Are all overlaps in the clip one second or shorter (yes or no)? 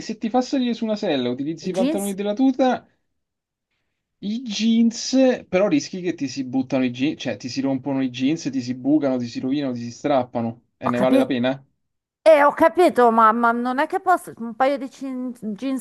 yes